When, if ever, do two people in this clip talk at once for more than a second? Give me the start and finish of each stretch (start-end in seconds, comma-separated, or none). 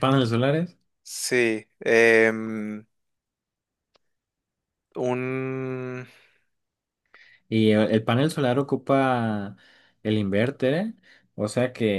none